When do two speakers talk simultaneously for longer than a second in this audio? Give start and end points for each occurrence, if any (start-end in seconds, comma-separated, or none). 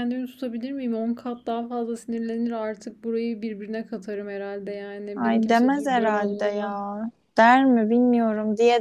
5.1-6.9